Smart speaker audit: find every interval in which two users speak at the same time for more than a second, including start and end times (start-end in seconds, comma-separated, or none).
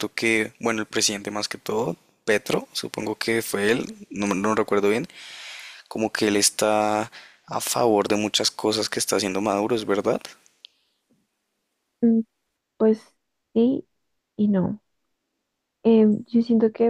none